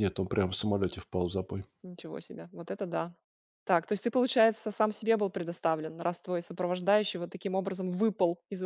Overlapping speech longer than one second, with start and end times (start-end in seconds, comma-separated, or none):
none